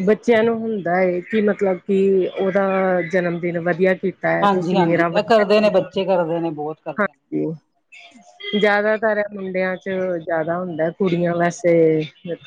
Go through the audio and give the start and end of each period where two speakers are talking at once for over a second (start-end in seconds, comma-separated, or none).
4.4-6.0